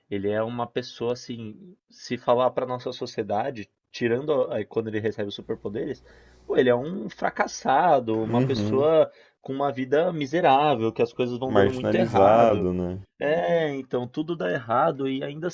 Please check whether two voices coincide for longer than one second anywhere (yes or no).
yes